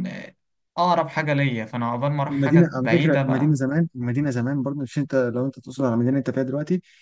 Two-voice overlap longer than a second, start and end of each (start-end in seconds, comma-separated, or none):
2.3-3.6